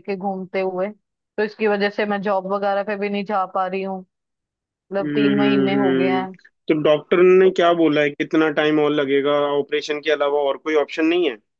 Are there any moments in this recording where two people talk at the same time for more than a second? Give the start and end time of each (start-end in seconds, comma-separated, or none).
4.8-6.2